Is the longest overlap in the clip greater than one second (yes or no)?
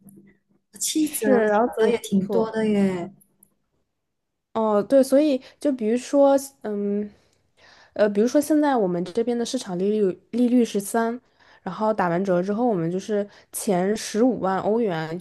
yes